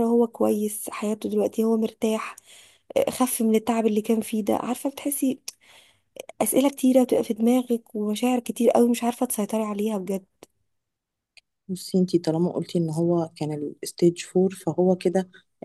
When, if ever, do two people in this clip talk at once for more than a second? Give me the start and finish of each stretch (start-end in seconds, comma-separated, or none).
none